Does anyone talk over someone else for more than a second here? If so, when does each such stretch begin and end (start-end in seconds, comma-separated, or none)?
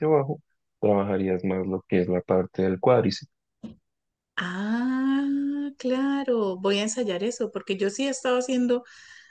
none